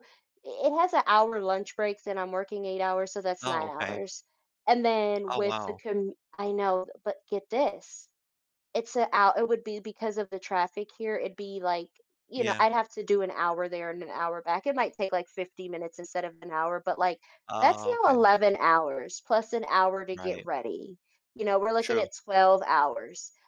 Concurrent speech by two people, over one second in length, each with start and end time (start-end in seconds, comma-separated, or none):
none